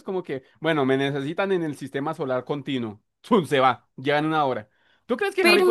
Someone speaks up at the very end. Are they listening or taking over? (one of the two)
taking over